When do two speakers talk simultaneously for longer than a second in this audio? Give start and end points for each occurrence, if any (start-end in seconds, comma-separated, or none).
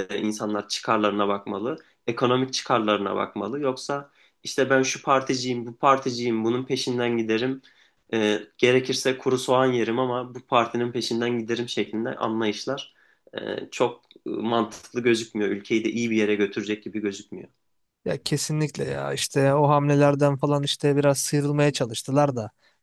none